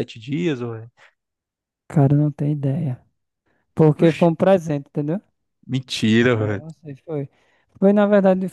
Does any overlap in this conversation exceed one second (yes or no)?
no